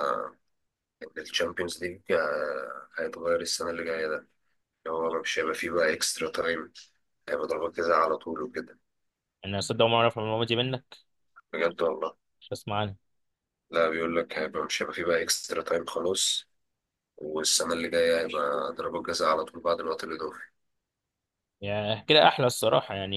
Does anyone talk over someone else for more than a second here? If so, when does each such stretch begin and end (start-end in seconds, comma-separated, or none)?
none